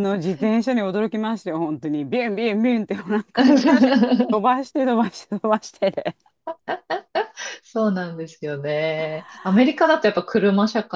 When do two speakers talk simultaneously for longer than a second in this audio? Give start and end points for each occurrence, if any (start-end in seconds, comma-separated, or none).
none